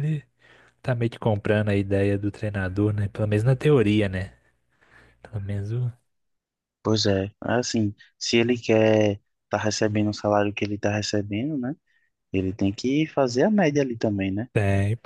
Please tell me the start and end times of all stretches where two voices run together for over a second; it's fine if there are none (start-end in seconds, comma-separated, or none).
none